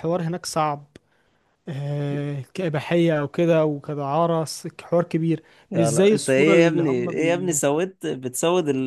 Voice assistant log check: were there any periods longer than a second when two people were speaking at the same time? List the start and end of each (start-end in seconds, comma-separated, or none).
5.7-7.5